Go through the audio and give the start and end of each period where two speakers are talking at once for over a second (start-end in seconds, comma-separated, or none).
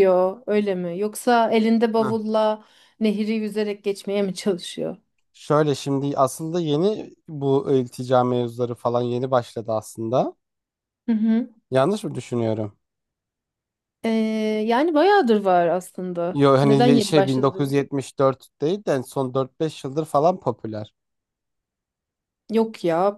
16.3-17.8